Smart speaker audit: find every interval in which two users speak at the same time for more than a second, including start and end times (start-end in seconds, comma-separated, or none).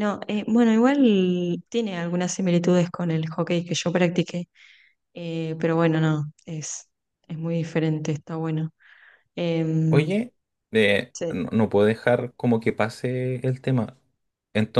none